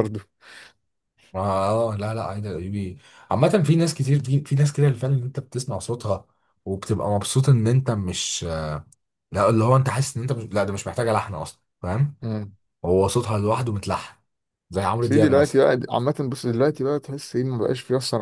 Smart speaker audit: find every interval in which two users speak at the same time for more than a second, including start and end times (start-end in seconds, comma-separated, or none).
none